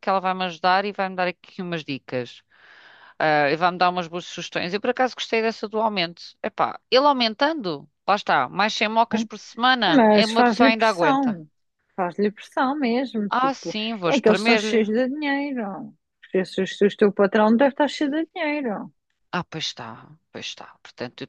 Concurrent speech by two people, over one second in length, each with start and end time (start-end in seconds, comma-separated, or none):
9.9-11.4, 13.3-14.9